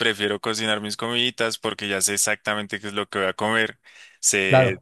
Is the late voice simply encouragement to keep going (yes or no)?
yes